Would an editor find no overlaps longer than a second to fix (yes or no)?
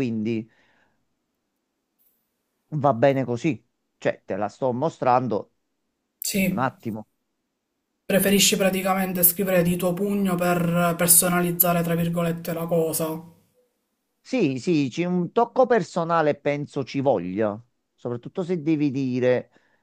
yes